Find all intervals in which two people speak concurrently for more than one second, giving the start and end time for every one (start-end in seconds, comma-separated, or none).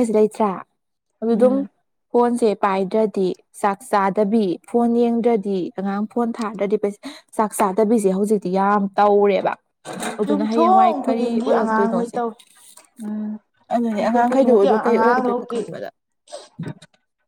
10.3-12.2, 13.9-15.7